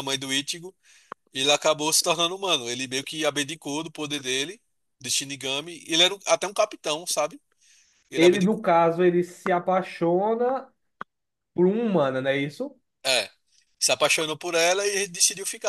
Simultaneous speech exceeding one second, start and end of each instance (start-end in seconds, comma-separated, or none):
none